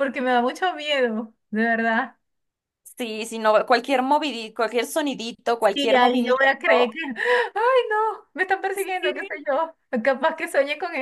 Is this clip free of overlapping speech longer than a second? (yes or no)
no